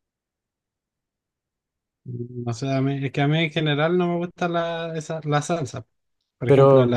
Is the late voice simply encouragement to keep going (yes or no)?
yes